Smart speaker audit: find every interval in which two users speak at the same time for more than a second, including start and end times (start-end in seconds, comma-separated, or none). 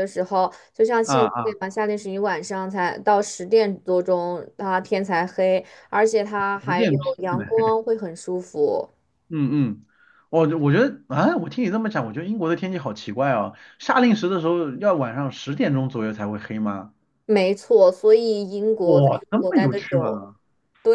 18.8-20.2